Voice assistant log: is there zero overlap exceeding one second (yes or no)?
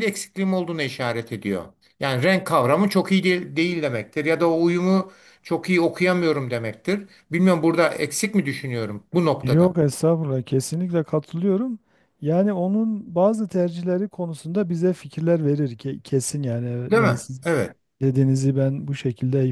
yes